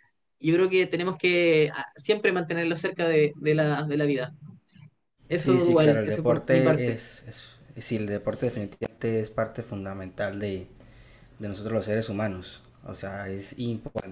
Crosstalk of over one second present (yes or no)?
yes